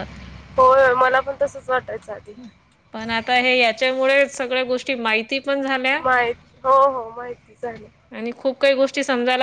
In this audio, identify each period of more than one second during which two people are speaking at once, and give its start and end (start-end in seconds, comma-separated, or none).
none